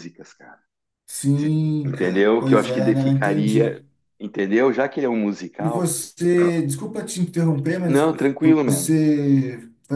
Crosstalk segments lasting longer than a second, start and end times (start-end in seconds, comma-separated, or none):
1.3-3.8